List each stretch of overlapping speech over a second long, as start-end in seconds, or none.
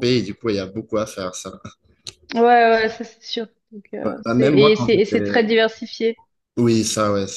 4.0-5.4